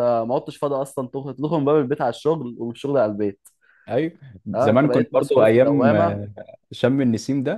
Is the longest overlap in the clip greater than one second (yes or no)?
yes